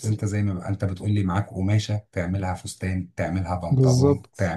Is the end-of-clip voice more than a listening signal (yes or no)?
no